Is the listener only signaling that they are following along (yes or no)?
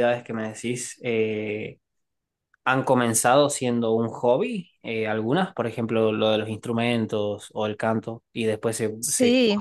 yes